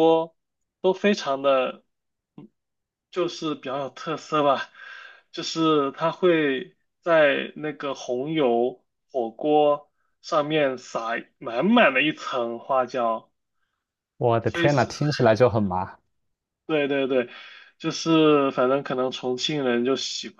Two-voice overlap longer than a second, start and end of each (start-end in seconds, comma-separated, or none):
none